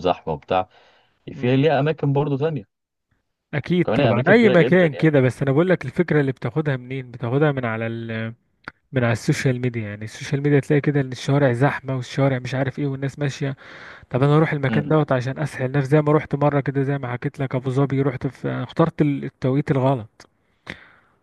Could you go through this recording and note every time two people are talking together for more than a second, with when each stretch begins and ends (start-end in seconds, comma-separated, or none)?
3.9-5.1